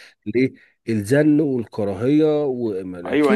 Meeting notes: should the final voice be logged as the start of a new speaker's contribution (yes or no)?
yes